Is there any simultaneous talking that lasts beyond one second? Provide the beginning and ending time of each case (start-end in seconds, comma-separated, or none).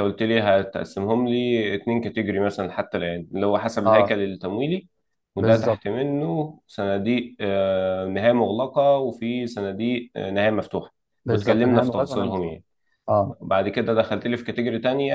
11.2-12.6